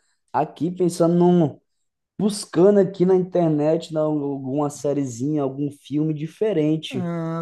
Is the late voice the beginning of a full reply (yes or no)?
no